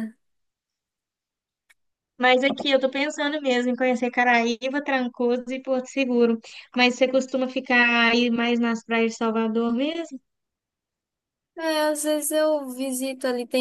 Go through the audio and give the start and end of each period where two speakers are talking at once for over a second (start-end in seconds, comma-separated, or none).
none